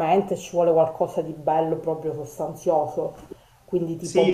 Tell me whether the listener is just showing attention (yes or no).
no